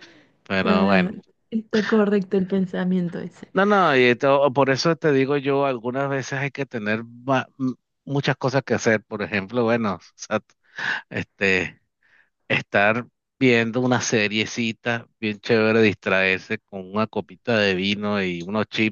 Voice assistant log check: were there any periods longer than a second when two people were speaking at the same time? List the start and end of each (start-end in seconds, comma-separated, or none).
none